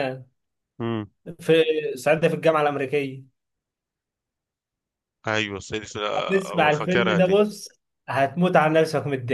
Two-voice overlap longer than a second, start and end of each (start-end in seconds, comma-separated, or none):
6.2-7.4